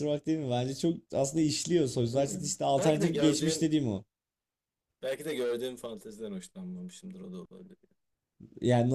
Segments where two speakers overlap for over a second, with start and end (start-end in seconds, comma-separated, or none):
2.1-3.7